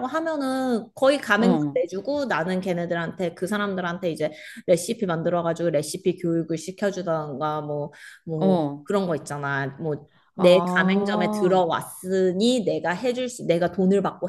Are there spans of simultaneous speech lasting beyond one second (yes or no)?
yes